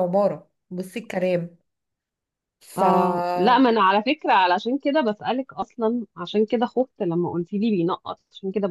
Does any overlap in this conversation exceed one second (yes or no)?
no